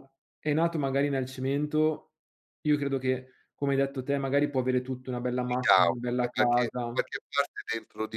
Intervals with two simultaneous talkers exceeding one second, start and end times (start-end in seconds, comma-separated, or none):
5.4-7.0